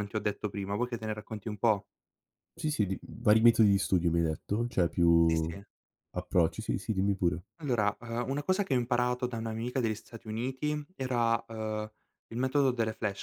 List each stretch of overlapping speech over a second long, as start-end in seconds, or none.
none